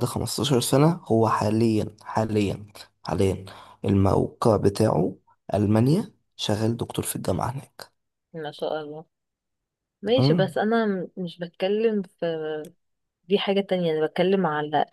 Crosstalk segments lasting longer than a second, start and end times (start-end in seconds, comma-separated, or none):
none